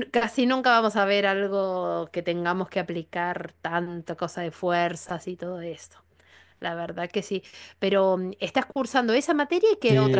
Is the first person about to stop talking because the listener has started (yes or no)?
yes